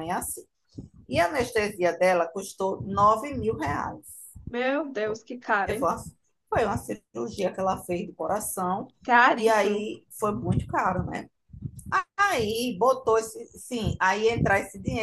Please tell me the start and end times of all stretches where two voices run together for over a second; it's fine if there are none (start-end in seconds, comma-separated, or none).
none